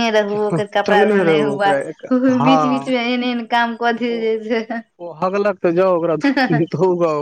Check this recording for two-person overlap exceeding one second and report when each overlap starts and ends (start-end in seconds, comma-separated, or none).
0.9-2.9